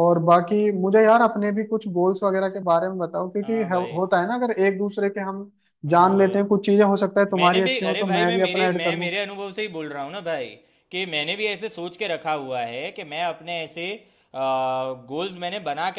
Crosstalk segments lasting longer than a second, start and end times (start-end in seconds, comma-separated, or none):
7.4-9.1